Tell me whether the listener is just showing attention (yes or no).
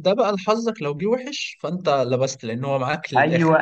no